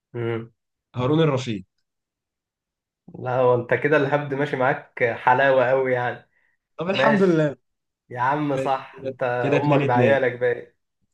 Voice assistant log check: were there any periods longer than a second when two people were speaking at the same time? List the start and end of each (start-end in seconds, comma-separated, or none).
8.5-10.2